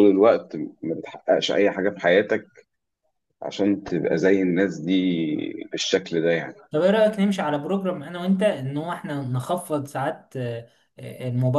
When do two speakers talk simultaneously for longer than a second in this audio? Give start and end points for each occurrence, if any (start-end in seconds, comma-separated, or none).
none